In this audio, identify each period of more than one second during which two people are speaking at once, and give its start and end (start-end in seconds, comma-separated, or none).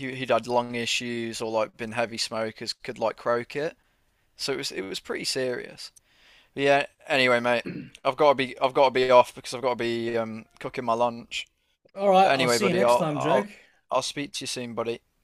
12.2-13.5